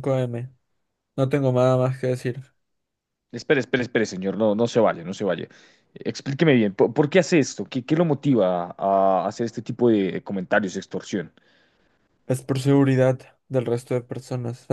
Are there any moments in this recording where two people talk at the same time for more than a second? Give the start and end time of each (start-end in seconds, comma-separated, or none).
none